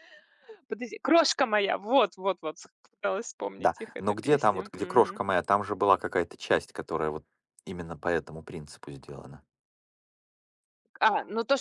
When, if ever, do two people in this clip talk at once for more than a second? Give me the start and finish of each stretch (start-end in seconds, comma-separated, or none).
3.6-5.2